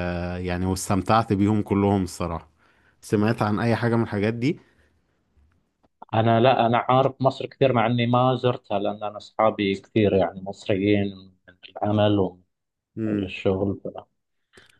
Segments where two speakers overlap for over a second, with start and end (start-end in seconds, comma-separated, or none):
none